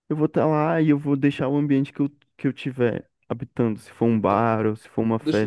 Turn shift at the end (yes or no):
yes